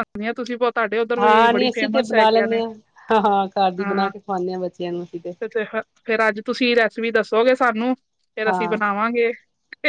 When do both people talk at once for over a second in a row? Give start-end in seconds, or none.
1.2-2.6